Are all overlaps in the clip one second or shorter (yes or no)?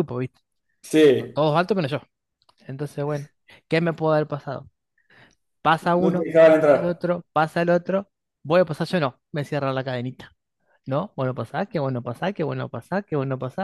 no